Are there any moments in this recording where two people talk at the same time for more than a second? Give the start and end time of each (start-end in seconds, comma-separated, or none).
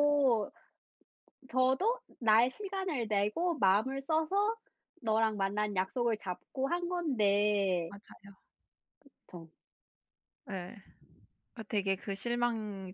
none